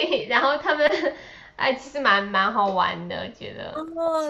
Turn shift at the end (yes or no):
yes